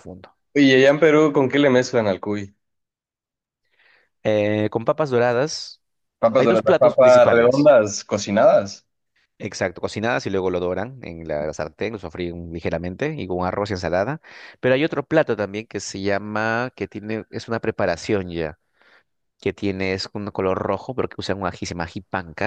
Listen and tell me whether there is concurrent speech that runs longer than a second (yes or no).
yes